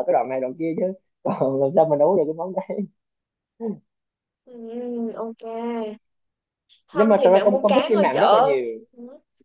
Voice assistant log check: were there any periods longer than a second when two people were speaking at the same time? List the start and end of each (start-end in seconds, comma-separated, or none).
6.9-8.5